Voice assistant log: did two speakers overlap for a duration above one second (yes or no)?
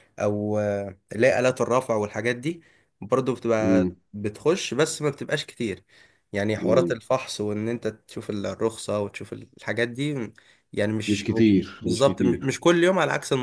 yes